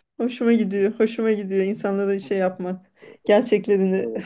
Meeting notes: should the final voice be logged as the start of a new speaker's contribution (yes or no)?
no